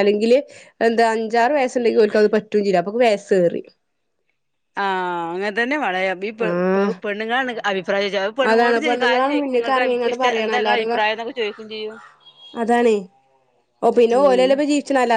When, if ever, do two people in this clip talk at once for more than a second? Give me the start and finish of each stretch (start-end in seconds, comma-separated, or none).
8.5-10.8